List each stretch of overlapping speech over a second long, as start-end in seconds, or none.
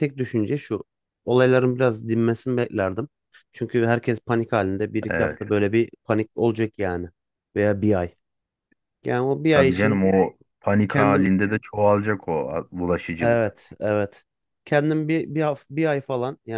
none